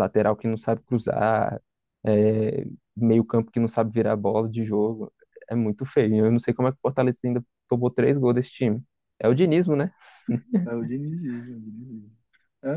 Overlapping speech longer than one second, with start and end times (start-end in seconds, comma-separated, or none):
none